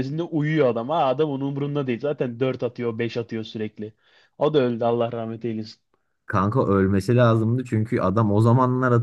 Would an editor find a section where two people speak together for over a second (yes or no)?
no